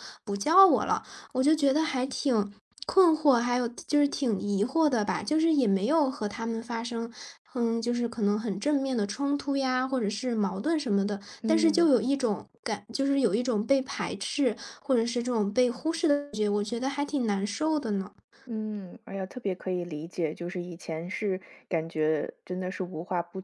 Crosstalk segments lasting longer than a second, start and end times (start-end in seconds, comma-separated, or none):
none